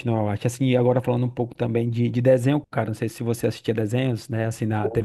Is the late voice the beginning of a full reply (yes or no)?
no